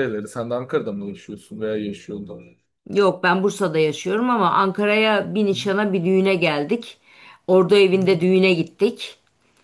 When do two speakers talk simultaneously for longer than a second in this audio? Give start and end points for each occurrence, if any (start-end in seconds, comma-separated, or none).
none